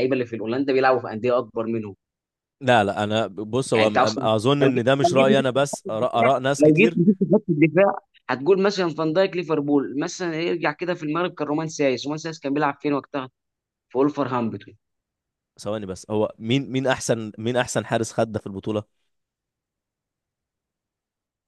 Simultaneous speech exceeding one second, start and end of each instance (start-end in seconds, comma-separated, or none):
3.7-7.0